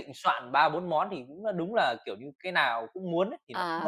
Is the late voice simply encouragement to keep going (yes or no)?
no